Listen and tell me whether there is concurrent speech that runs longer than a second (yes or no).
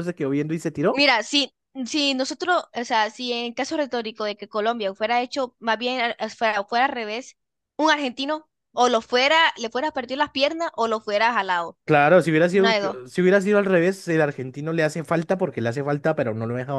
no